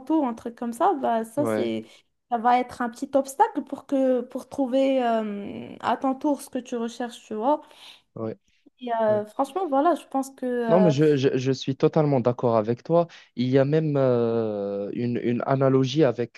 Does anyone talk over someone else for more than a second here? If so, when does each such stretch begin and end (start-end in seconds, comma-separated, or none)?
none